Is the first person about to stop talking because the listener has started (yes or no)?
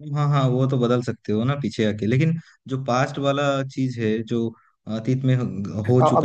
yes